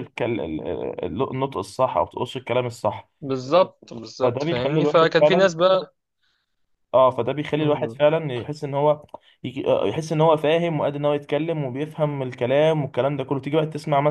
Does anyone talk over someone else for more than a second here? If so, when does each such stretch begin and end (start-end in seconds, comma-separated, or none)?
4.2-5.5